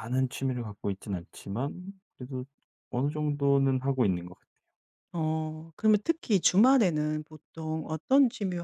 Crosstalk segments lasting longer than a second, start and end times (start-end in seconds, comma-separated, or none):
none